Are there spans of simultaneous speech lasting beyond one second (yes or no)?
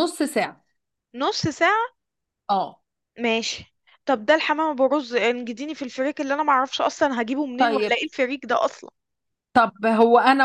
no